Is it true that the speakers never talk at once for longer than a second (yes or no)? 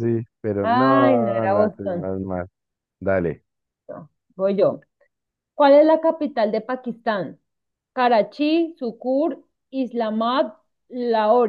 no